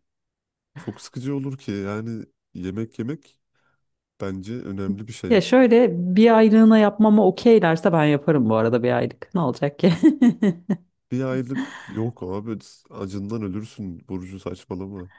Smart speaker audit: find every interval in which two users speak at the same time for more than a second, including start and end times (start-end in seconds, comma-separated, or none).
none